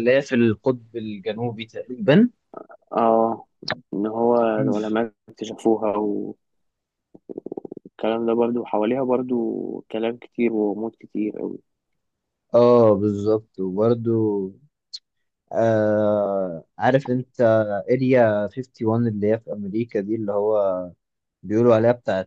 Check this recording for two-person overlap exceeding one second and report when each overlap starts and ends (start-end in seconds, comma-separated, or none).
none